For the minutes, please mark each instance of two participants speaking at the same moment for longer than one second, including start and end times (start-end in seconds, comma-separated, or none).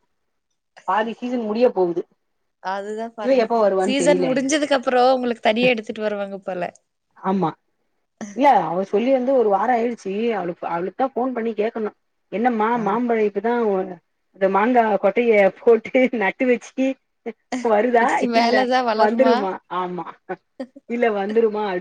none